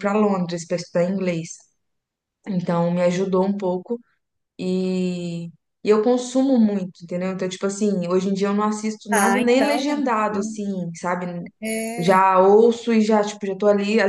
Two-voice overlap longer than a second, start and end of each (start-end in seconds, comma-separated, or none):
9.1-10.6